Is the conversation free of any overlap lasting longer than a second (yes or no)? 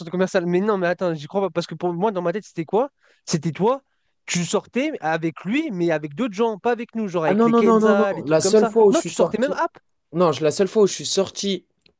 no